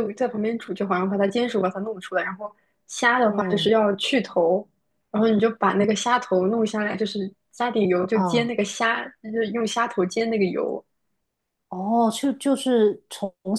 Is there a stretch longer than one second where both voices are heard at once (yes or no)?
no